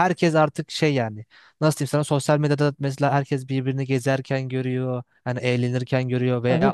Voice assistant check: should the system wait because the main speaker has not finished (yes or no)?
yes